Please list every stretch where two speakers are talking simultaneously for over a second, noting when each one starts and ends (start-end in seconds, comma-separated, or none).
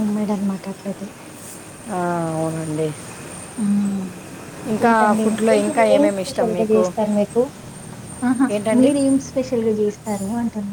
4.7-6.8